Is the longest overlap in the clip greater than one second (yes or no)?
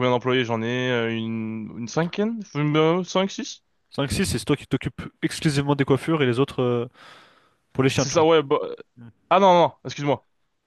no